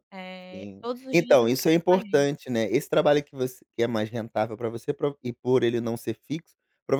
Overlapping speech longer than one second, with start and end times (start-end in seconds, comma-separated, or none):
0.5-2.3